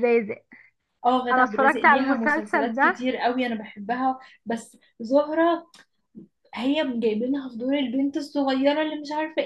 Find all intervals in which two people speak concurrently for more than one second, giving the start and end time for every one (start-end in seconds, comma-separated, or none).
1.3-3.0